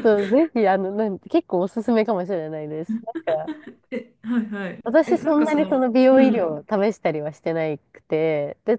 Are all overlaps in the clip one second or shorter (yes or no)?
no